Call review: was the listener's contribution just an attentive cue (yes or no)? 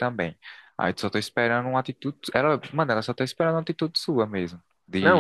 no